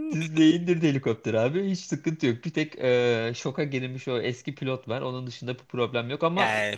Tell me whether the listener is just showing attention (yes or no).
no